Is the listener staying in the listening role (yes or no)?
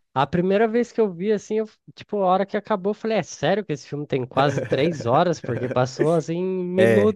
no